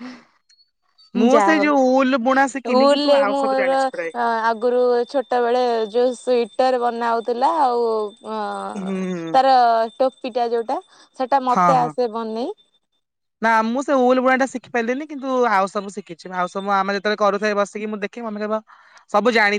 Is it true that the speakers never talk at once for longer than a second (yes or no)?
no